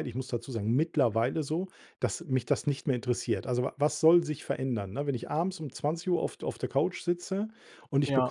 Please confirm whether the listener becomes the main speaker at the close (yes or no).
no